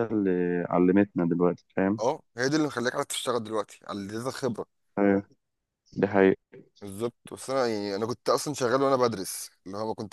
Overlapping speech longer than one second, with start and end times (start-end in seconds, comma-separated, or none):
none